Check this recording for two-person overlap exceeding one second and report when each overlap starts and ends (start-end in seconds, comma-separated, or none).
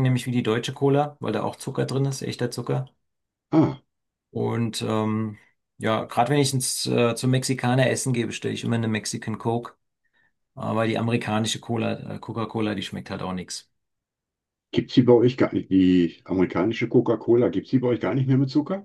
none